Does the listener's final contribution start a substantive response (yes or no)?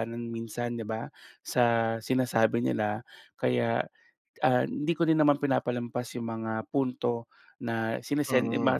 no